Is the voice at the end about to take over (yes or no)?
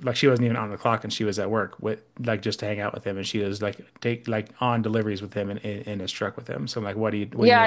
yes